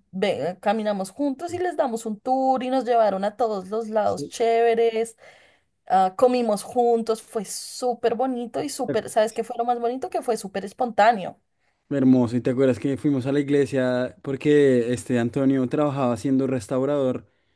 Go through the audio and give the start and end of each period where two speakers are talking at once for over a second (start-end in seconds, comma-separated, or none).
none